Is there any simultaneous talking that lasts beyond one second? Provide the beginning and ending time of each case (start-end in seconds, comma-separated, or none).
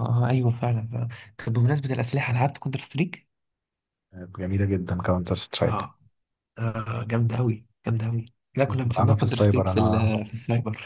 8.6-10.1